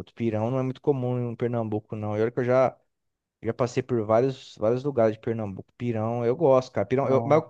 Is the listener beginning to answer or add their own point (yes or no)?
no